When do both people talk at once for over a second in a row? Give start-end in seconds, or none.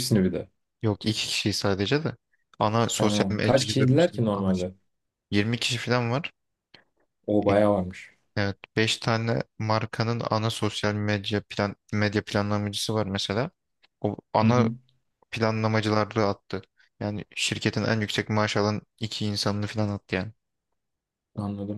2.9-4.7